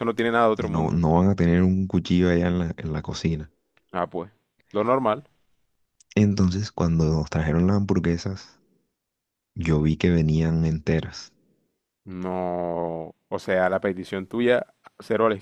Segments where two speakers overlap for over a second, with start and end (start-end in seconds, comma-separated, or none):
none